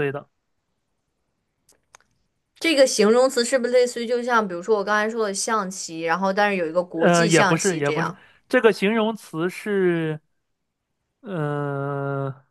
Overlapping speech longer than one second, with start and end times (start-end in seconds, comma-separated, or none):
7.0-8.2